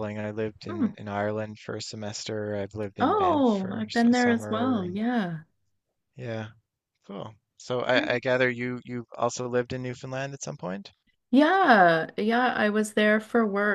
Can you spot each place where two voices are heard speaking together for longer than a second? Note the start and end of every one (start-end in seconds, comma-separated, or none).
3.0-5.0